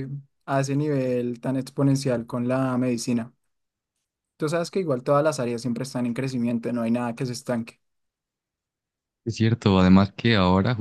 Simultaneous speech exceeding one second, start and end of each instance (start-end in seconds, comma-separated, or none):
none